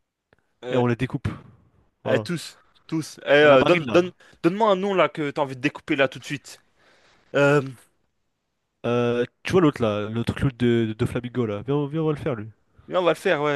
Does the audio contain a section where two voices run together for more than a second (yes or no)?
no